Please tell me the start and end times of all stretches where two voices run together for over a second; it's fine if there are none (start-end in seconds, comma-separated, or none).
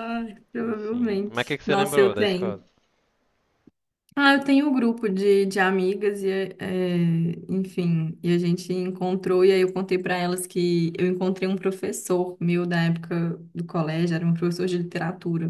0.6-2.6